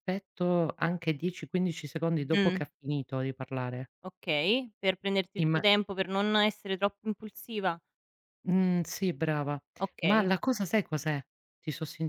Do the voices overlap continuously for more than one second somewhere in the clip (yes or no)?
no